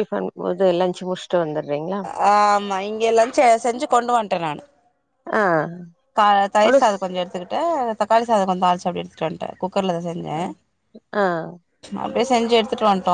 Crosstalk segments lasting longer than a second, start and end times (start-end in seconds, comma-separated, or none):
none